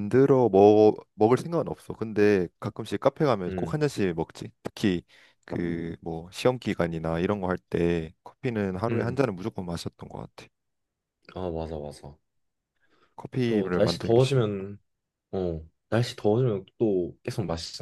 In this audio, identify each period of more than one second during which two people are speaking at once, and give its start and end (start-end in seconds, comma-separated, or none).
13.5-14.7